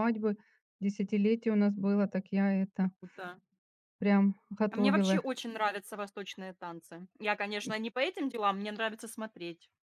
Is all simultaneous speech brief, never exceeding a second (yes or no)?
yes